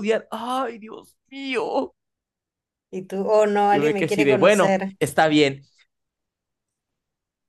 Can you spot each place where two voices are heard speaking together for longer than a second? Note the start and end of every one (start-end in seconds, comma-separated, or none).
3.7-4.9